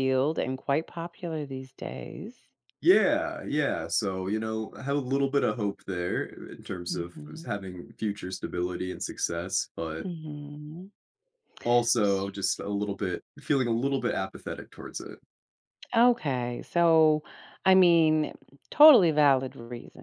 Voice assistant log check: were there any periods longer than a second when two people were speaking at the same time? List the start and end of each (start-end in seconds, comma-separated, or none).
none